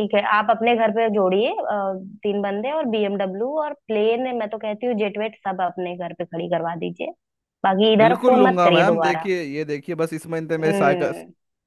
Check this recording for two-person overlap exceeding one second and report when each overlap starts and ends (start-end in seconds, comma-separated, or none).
8.0-9.3